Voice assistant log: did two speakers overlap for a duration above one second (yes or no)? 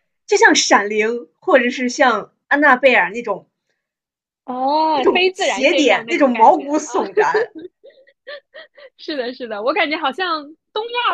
yes